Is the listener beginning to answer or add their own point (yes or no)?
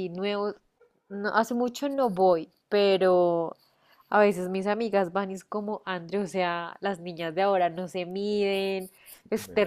no